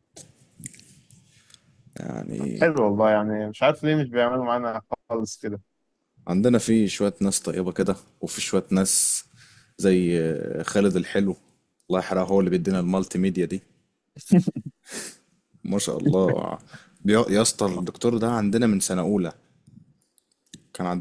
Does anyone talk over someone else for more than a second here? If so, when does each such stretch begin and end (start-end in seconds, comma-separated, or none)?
none